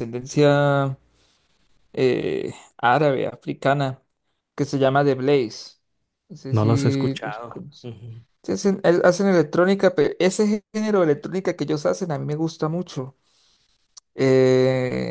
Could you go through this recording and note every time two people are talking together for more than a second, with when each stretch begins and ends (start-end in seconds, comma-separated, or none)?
6.5-7.9